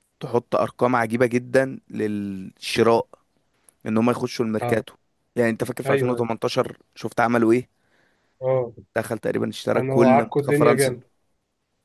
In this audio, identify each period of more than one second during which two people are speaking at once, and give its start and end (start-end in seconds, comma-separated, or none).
9.8-10.9